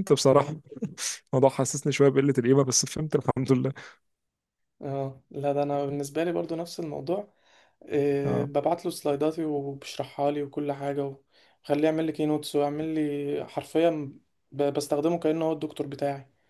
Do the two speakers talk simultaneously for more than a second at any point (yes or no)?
no